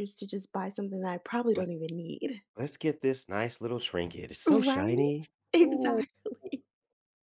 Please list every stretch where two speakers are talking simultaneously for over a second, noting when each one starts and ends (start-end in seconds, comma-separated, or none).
4.5-6.0